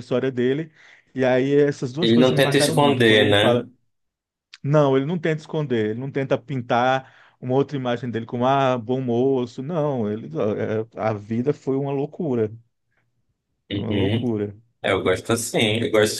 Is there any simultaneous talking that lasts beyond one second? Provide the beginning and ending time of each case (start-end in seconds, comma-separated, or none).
2.0-3.7